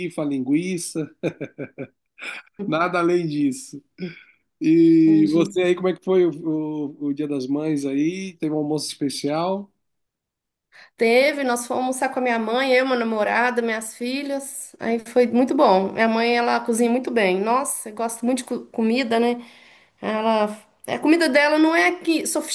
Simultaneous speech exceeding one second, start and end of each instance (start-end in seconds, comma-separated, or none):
none